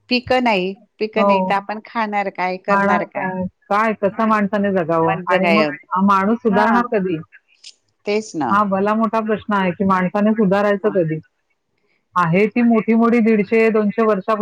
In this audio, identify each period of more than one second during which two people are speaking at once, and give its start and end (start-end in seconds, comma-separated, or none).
none